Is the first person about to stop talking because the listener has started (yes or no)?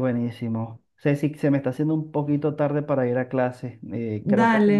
no